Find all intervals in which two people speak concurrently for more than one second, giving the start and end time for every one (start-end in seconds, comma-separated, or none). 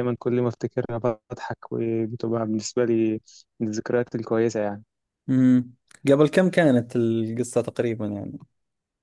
none